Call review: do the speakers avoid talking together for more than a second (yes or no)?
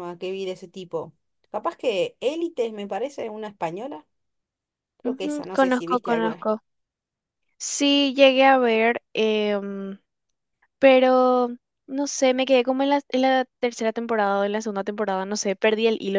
no